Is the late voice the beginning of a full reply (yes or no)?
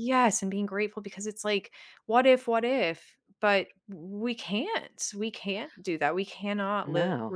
no